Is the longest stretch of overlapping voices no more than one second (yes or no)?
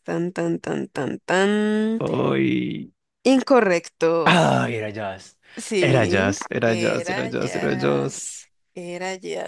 no